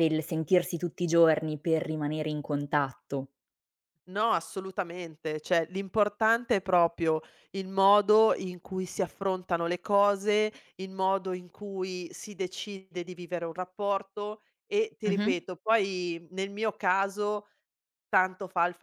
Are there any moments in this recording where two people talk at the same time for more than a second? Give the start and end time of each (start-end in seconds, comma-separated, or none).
none